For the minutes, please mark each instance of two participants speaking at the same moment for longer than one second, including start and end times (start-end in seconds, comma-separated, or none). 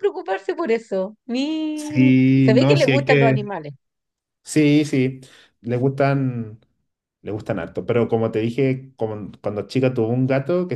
1.7-3.5